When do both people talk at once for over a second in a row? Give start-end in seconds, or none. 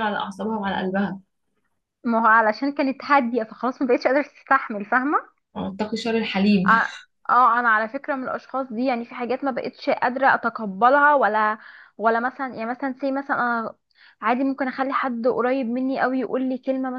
none